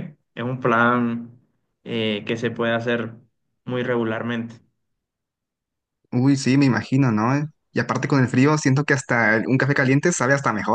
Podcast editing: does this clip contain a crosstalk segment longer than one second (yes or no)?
no